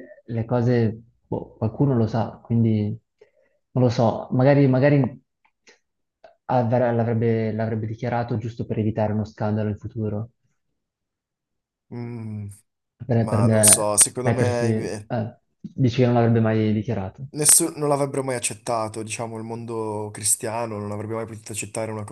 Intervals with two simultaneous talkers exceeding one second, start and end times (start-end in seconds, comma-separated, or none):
13.2-15.1